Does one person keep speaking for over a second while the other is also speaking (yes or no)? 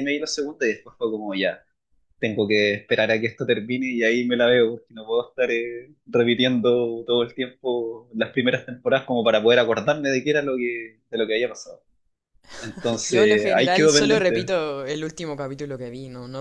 yes